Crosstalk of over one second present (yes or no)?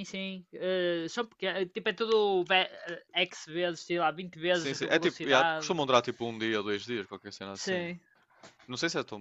yes